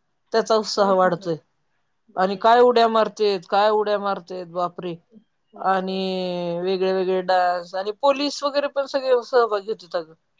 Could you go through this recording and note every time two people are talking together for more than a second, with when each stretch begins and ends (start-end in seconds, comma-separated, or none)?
none